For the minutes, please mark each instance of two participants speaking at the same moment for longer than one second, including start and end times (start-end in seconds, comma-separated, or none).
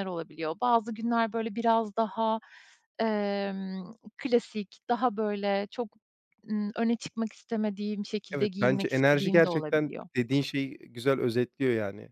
8.3-10.1